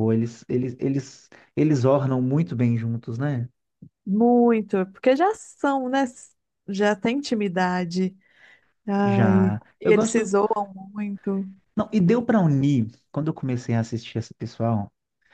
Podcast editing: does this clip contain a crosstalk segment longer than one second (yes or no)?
yes